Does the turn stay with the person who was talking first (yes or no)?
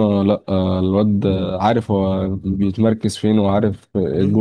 no